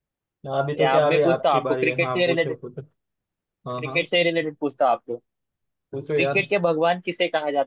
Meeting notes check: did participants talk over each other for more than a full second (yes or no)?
yes